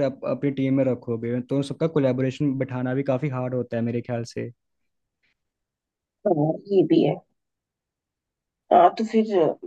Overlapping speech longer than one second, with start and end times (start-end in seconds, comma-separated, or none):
none